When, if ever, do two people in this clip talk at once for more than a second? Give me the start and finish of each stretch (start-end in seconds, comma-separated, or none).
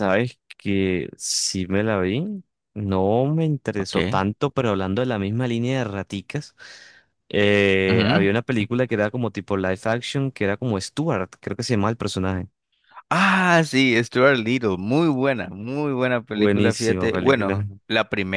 16.3-17.6